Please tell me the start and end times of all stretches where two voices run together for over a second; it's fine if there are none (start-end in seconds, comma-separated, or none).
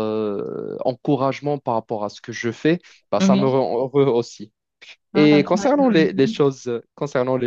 5.1-6.3